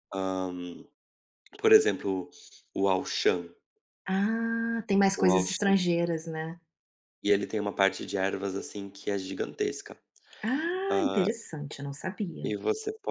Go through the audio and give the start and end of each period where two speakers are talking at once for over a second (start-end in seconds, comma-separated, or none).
none